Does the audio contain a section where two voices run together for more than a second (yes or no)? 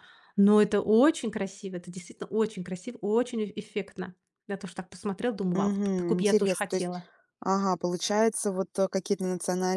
yes